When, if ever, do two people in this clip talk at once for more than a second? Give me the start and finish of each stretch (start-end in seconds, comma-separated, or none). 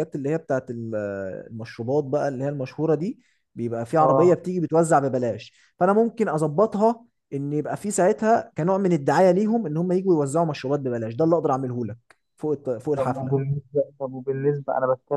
none